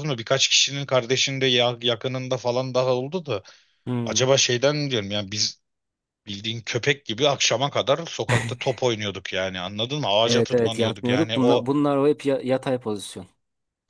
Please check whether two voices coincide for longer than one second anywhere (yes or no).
yes